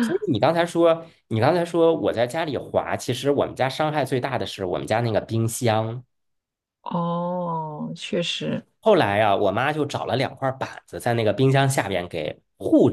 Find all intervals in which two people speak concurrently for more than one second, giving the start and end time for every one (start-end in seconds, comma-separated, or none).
none